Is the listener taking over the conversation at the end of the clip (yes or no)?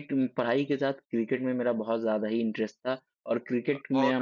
no